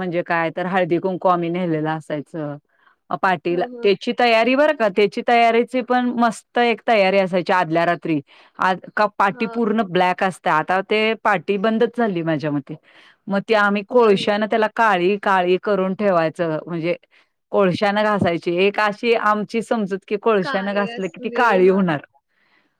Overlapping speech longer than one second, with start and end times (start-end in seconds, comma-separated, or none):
20.4-21.8